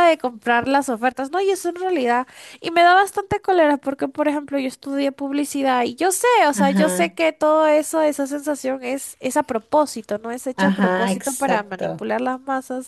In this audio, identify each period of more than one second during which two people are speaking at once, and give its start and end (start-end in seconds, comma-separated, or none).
10.6-12.1